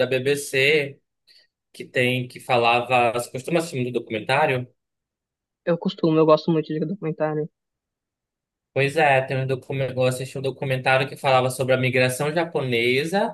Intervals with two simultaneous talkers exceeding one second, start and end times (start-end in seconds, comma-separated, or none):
none